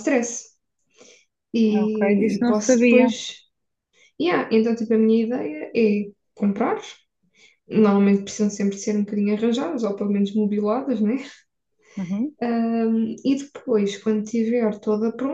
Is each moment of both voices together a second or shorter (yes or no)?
no